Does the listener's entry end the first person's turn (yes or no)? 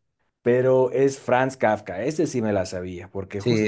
yes